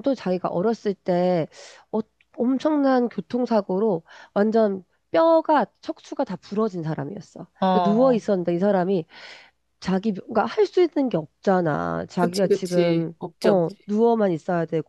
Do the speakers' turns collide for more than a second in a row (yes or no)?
yes